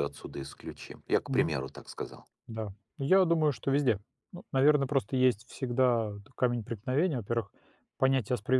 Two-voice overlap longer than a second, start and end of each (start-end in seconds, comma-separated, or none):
none